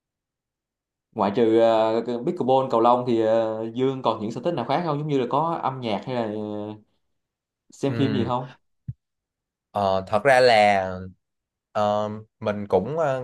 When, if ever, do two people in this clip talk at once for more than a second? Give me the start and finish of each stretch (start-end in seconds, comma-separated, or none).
none